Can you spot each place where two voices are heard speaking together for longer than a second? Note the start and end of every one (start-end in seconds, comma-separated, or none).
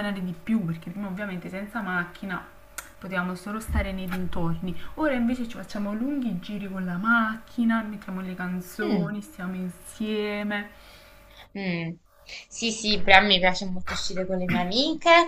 none